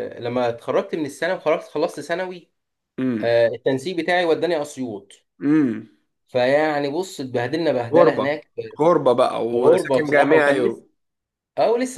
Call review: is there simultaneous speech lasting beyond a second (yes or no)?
yes